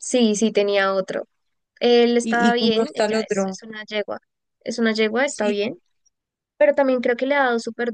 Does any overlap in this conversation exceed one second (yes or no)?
yes